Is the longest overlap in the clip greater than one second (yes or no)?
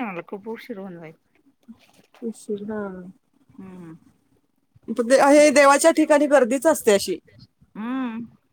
no